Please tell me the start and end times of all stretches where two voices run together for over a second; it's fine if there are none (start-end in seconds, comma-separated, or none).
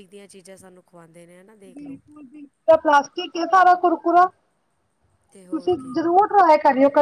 none